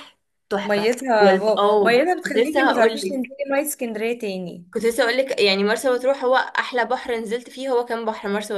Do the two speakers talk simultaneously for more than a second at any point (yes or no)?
yes